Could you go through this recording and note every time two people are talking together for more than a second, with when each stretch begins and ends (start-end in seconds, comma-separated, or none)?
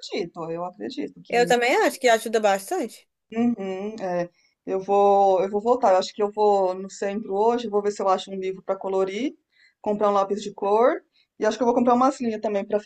none